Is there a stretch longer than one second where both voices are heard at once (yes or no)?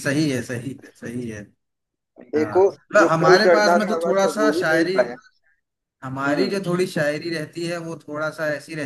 yes